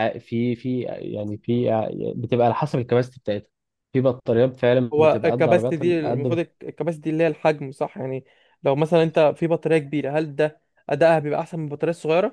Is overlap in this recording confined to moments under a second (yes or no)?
no